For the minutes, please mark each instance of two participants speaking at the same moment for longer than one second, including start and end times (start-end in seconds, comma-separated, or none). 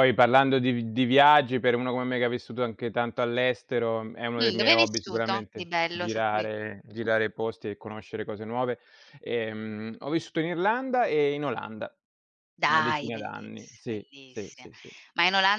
4.4-6.5, 12.7-14.7